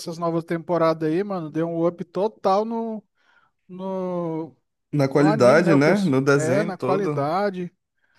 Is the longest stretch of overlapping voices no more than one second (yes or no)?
no